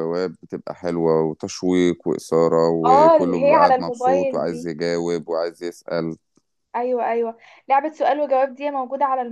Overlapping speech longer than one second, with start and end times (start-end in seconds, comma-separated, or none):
2.9-4.7